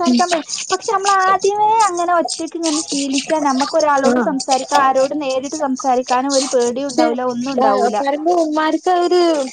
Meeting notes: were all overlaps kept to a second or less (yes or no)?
yes